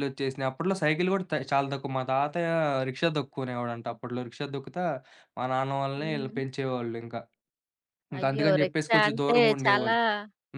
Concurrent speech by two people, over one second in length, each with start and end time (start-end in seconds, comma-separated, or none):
8.2-9.9